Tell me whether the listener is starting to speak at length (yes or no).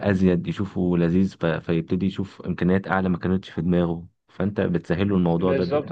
yes